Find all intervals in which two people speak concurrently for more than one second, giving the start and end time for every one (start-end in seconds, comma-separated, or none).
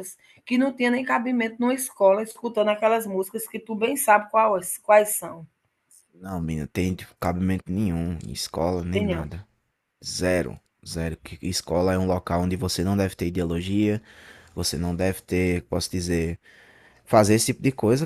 none